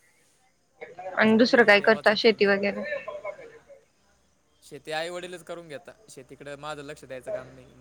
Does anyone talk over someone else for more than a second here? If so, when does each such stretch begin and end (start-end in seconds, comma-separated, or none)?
1.3-2.5